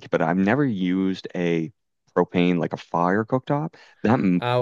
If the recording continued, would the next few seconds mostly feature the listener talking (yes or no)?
yes